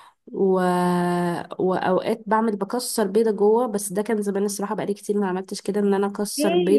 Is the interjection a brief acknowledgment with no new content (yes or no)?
no